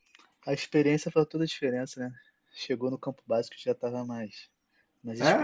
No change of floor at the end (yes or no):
no